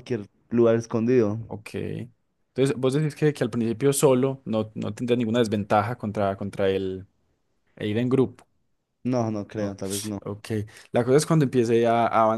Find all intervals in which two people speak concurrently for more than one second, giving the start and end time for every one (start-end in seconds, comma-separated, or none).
none